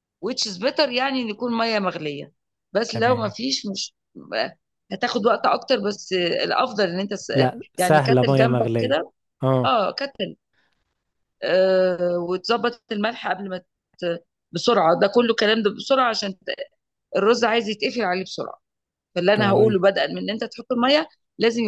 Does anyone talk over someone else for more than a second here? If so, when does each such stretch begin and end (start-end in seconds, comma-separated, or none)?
7.8-9.0